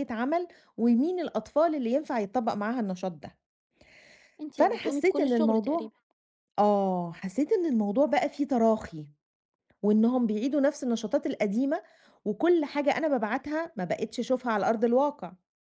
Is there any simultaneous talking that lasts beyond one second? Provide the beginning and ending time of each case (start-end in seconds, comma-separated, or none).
4.5-5.9